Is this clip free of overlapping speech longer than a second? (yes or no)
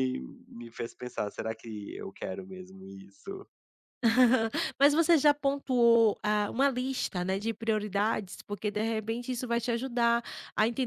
yes